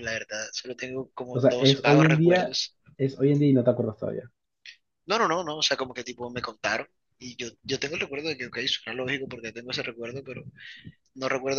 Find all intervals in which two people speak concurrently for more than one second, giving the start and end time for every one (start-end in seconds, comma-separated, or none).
1.3-2.6